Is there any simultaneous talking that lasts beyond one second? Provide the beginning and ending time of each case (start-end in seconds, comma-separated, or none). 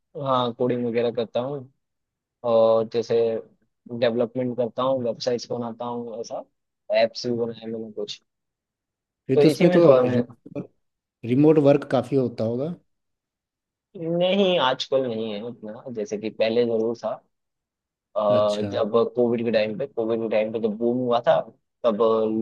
none